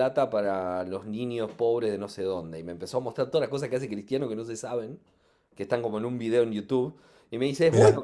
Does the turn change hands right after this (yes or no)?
no